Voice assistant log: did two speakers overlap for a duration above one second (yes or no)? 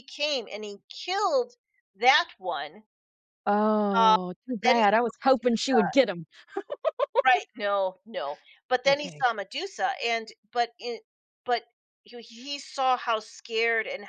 yes